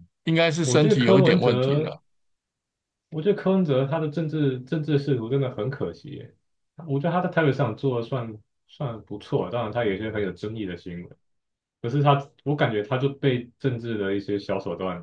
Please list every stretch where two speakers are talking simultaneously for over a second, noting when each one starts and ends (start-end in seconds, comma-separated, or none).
0.6-2.0